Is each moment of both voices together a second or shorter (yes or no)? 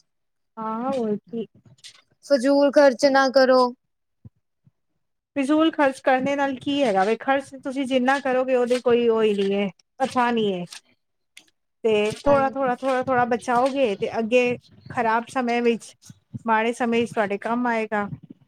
yes